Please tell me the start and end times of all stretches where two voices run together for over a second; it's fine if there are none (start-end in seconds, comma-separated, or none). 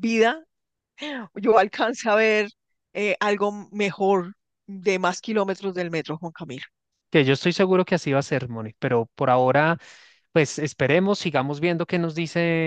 none